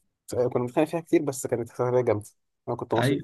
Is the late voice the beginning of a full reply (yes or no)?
yes